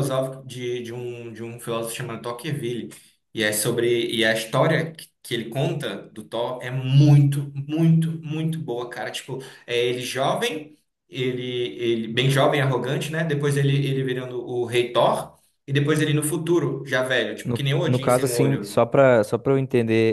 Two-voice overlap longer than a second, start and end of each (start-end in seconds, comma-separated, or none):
17.4-18.8